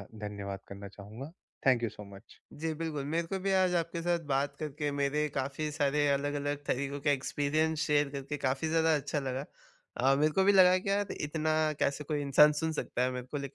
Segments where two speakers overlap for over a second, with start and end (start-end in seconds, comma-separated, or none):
none